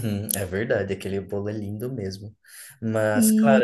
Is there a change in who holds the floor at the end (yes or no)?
no